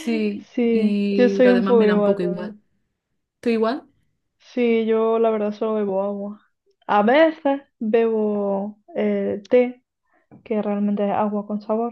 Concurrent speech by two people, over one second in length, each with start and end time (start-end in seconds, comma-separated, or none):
0.5-2.6